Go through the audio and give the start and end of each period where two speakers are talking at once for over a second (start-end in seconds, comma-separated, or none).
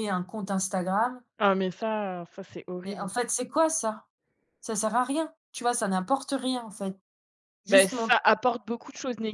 none